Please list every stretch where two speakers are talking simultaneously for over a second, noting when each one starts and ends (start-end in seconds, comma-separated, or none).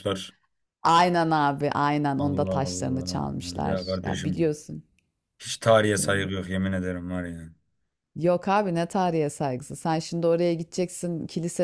2.2-4.5